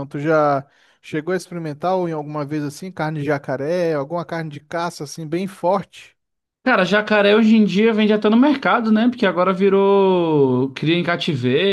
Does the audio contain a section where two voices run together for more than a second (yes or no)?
no